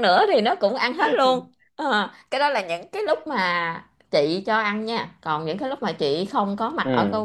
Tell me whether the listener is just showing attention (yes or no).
yes